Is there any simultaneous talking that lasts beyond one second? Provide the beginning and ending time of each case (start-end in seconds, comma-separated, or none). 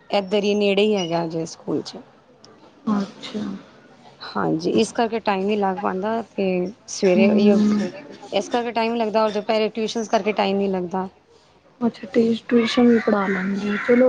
none